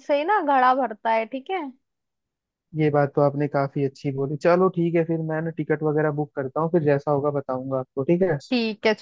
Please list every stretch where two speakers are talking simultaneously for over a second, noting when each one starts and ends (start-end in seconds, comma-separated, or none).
none